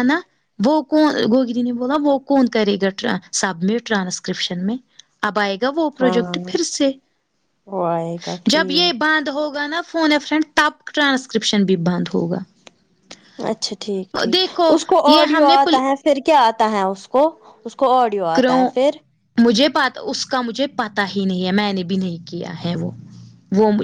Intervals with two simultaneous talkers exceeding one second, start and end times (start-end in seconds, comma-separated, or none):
none